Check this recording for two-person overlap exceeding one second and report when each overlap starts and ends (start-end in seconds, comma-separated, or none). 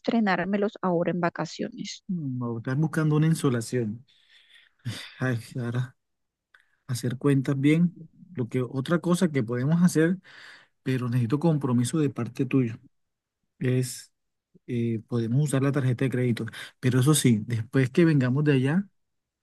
none